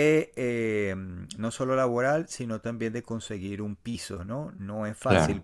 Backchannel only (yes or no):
yes